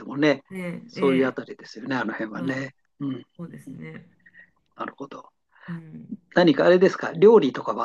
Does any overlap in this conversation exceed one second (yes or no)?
no